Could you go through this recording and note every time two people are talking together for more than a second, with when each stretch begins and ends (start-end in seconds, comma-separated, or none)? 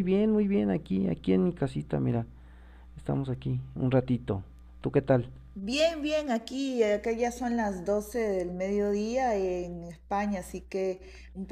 none